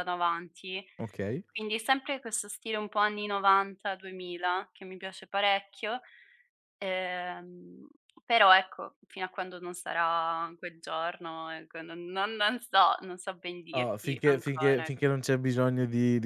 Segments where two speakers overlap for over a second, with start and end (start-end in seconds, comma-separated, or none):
13.7-14.9